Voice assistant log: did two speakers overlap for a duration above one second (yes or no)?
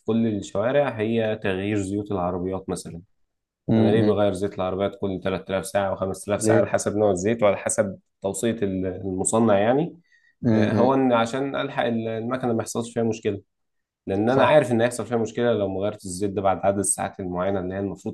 no